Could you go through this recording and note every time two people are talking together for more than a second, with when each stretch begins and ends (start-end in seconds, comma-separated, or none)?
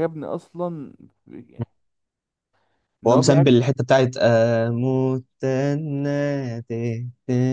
none